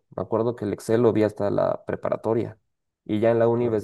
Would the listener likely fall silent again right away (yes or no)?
yes